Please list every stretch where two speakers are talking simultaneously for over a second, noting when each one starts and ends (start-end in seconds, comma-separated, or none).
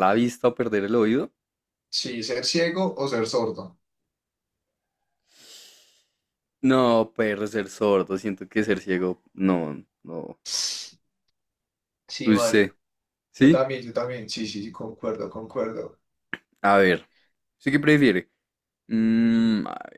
none